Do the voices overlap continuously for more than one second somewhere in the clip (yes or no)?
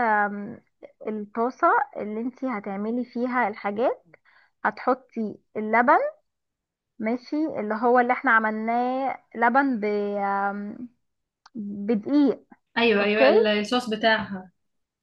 no